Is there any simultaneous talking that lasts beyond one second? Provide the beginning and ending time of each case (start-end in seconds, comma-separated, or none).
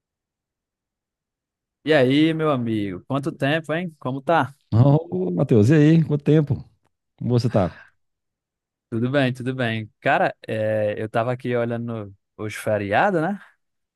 none